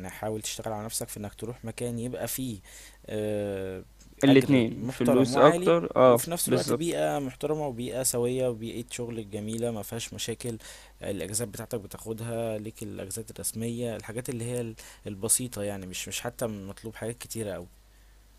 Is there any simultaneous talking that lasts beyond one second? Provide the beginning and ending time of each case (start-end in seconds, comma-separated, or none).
4.3-6.9